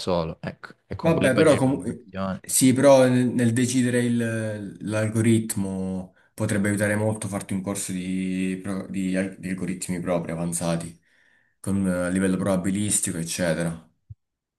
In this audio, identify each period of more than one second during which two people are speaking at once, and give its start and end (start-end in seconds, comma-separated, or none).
1.0-2.4